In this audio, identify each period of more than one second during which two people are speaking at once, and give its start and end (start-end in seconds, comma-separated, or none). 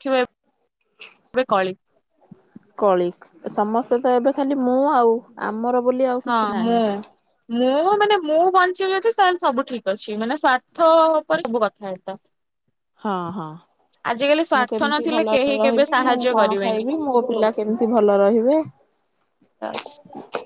14.6-16.8